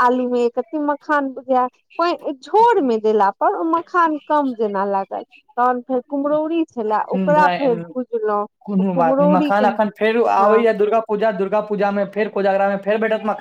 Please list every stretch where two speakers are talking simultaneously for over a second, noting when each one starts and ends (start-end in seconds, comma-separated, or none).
8.9-10.5